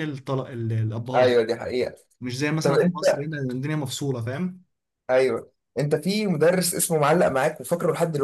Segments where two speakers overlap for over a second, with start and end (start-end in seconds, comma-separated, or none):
none